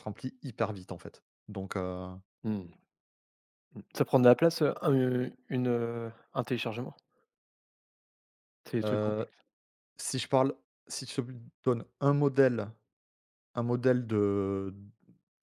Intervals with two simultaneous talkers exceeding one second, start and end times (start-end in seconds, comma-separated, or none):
none